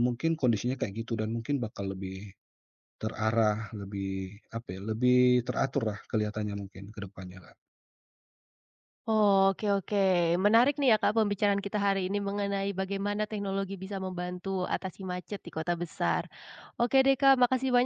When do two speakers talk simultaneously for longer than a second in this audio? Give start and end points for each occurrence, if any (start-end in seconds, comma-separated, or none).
none